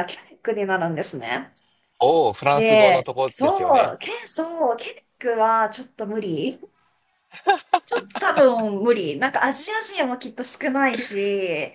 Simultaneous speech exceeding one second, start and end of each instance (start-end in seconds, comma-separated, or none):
2.5-4.0